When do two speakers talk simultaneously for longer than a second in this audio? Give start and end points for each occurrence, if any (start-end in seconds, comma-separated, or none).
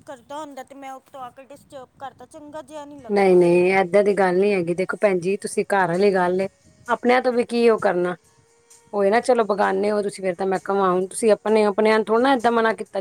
none